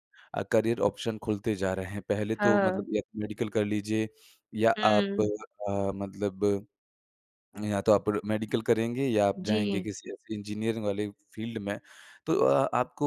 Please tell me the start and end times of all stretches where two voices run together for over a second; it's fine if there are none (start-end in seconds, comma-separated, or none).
none